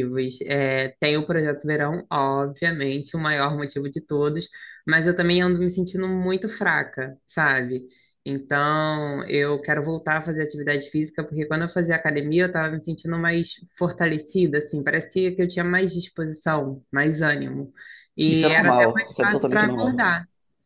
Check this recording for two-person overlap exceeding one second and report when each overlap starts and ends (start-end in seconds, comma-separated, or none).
18.3-20.1